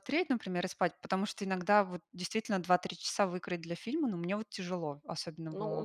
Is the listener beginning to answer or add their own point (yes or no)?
yes